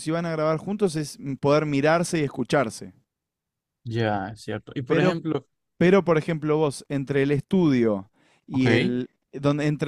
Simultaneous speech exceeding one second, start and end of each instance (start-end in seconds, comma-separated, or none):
none